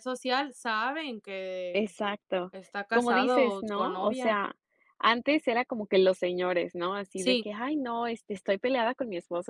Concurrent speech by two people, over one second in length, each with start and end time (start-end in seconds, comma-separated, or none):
2.9-4.4